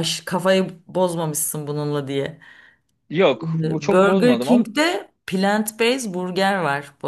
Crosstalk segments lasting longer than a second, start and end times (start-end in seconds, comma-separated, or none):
3.4-4.7